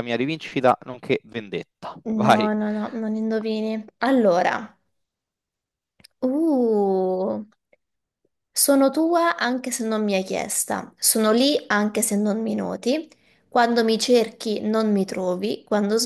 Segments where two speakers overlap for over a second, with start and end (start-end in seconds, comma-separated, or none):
none